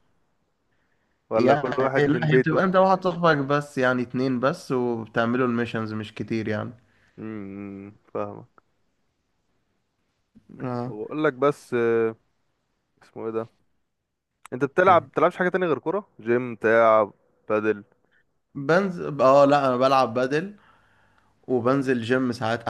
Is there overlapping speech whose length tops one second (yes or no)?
yes